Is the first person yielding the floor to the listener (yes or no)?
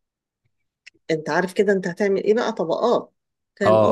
yes